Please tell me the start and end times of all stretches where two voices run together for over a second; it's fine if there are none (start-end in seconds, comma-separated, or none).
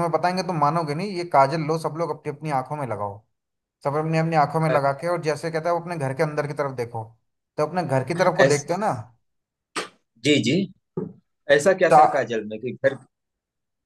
none